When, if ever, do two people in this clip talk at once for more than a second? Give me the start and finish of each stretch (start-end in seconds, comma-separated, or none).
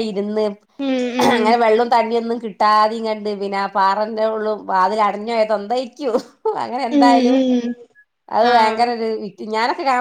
none